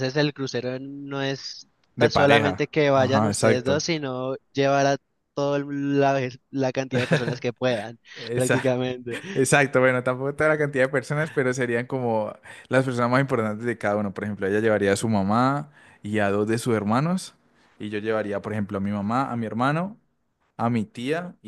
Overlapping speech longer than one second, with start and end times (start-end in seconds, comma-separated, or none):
1.9-3.8